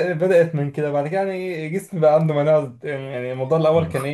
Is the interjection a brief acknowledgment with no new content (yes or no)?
yes